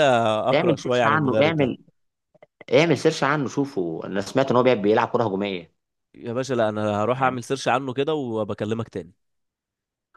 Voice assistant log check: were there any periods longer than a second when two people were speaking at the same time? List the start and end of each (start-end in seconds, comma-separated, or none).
0.5-1.7